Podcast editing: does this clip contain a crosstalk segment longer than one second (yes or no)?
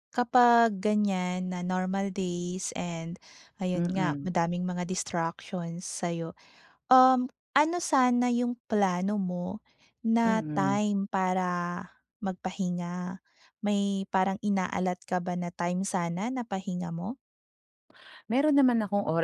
no